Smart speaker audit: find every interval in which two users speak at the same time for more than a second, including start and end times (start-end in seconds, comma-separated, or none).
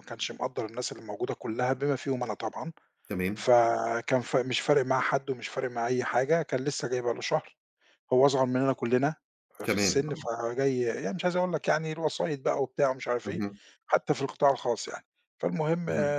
none